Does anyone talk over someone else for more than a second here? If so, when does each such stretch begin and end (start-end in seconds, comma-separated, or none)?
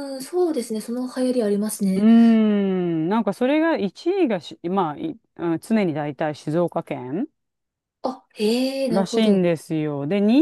none